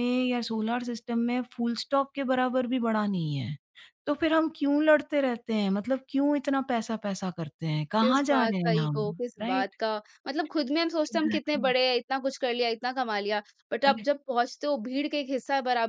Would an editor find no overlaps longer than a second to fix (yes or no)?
no